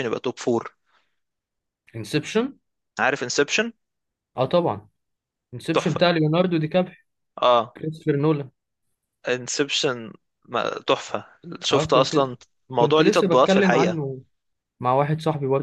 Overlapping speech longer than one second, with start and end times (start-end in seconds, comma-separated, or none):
12.8-14.0